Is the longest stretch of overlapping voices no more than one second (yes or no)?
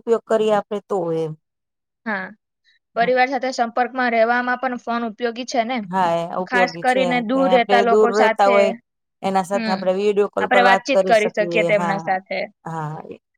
no